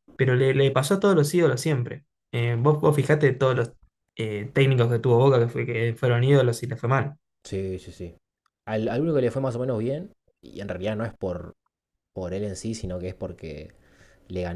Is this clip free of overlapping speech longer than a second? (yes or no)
yes